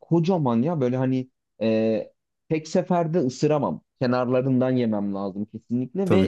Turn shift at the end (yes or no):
yes